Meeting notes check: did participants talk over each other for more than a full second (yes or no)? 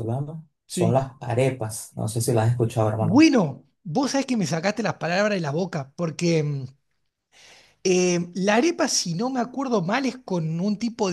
no